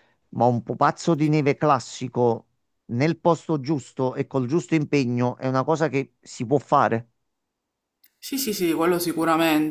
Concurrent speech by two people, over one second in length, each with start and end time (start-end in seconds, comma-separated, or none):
none